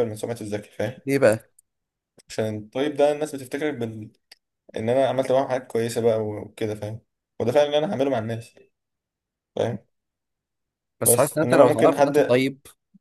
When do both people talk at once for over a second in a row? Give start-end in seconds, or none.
11.0-12.3